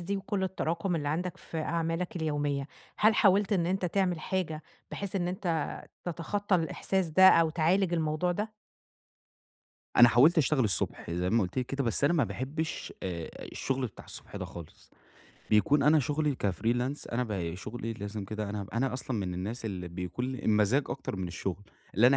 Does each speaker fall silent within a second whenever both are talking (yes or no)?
yes